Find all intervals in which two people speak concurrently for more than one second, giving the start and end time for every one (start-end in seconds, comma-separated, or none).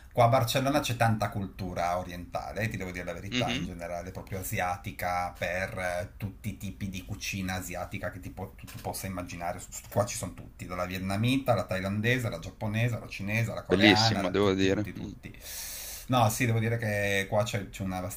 13.7-15.1